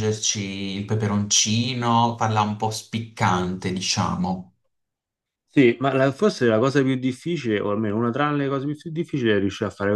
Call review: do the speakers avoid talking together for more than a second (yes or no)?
yes